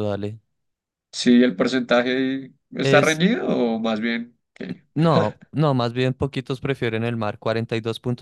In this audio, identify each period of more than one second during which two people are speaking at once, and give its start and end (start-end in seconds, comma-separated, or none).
none